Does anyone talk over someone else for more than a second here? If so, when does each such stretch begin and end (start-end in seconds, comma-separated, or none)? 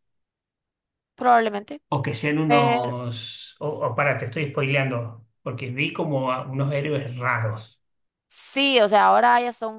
none